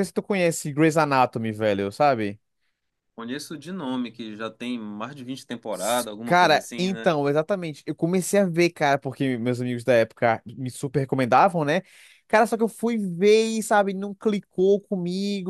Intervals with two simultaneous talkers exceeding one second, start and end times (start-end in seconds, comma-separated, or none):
5.7-7.1